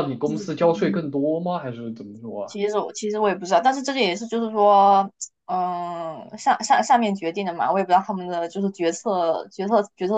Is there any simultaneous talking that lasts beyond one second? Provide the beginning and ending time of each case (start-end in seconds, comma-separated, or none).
none